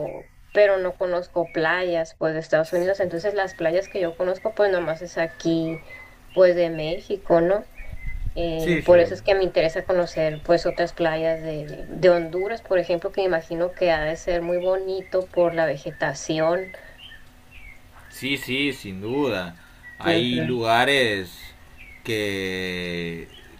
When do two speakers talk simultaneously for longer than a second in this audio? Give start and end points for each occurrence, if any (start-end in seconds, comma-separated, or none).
none